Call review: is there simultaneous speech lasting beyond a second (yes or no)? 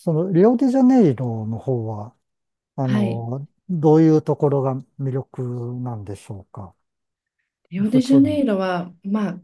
no